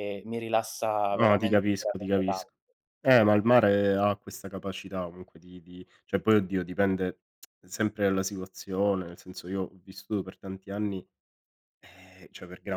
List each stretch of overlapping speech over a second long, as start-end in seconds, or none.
1.1-2.4